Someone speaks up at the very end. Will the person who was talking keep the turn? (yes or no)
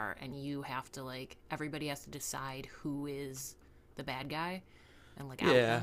no